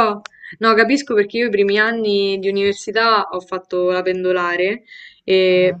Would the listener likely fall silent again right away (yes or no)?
yes